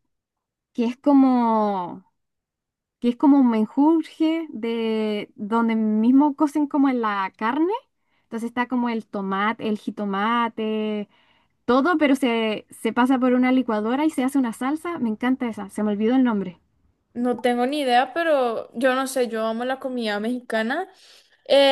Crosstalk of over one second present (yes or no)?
no